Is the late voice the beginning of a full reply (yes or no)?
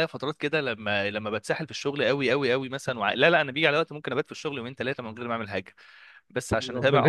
no